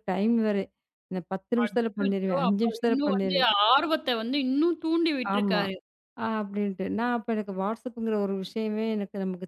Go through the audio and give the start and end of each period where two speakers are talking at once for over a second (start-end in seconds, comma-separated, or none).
1.6-3.5